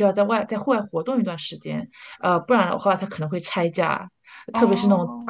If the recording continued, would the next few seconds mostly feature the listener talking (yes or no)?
no